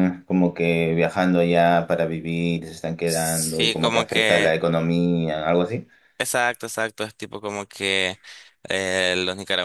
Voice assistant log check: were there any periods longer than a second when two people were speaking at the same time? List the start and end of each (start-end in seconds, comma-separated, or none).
3.0-4.6